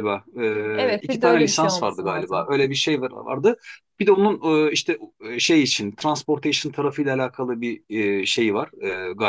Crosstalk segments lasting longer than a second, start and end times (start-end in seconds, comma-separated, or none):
0.7-2.5